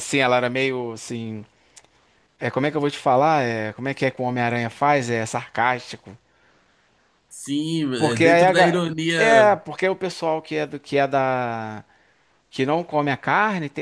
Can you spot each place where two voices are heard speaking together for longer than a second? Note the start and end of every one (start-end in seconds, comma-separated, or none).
8.0-9.6